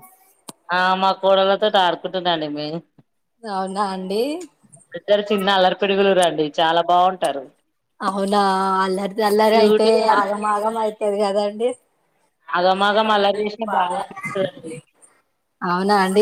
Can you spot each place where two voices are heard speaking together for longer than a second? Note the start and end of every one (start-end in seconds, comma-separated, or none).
12.6-14.0